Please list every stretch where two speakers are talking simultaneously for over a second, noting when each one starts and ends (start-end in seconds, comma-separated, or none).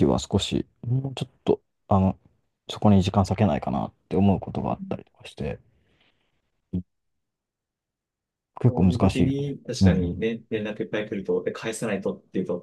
8.7-10.2